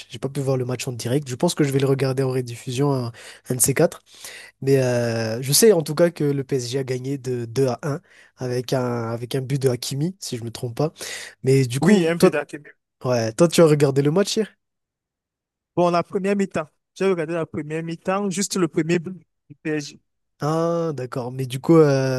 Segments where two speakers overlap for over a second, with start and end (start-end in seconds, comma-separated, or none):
none